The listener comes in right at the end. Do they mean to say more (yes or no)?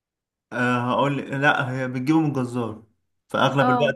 no